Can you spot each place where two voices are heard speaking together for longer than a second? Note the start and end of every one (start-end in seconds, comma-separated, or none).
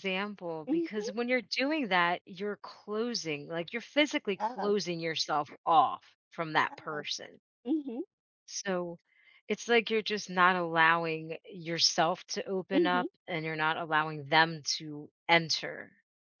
none